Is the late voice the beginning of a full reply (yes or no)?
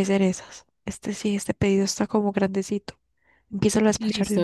yes